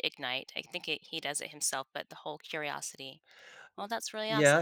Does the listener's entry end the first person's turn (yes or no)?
yes